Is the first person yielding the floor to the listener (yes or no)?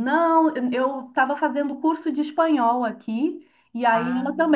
no